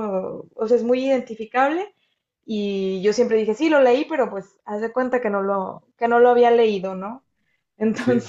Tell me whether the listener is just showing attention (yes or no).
yes